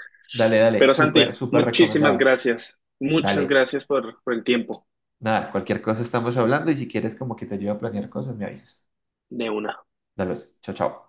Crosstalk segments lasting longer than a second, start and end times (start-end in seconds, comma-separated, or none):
0.8-2.4